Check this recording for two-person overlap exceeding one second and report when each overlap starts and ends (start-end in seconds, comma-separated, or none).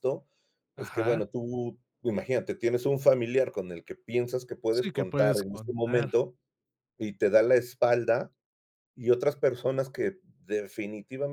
4.7-6.1